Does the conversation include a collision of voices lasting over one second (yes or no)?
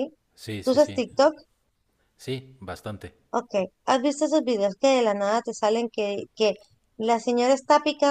no